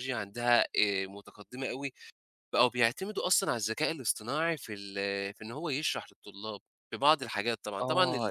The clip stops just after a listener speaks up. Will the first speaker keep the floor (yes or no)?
no